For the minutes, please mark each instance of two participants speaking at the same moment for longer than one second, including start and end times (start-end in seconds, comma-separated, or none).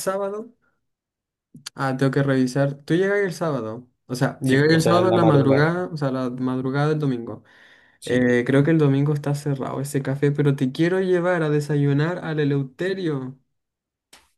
4.4-5.7